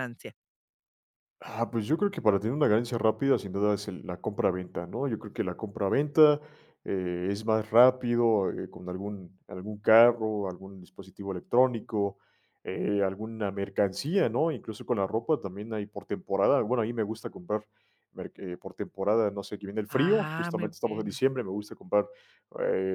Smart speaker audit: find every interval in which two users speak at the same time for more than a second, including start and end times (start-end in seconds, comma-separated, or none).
19.9-21.2